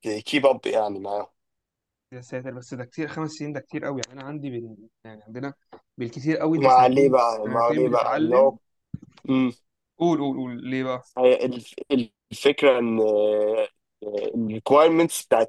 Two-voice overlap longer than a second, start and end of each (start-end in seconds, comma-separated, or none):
6.6-8.5